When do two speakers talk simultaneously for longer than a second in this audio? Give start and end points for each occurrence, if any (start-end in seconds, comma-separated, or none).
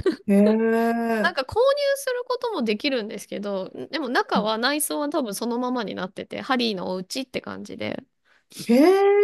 none